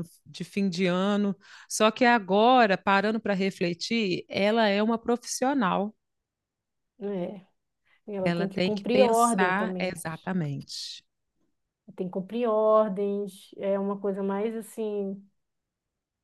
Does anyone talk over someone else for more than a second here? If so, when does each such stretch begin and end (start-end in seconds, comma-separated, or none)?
8.2-9.9